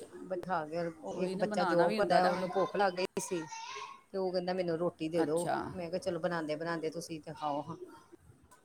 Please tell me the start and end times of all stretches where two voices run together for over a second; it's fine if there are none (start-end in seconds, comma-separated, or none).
1.2-2.4